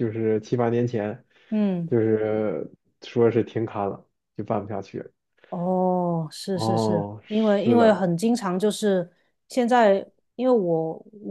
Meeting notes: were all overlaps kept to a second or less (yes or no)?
no